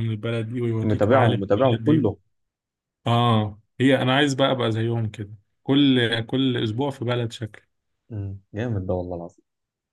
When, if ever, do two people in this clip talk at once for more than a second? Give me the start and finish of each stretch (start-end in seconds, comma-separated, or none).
0.8-2.0